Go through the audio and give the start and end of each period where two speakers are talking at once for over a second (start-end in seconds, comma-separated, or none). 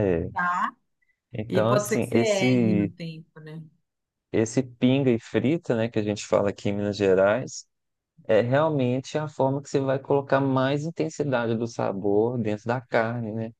1.5-2.9